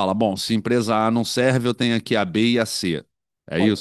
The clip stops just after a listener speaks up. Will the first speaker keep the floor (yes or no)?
no